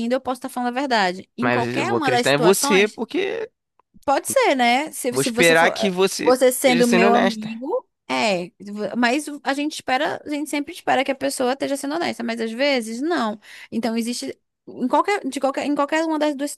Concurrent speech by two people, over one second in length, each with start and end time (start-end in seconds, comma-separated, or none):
1.4-3.0, 5.1-7.5